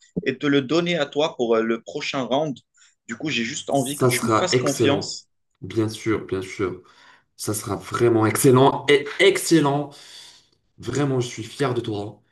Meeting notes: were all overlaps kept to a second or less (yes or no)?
no